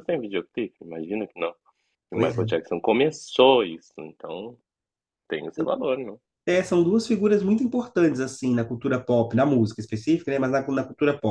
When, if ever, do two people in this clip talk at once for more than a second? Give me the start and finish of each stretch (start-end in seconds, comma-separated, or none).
none